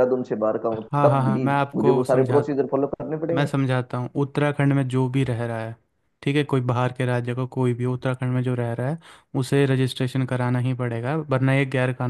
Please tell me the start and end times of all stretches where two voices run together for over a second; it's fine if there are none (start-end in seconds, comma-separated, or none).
0.7-2.4